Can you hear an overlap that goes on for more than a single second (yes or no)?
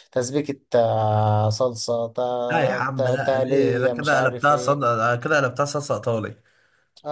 yes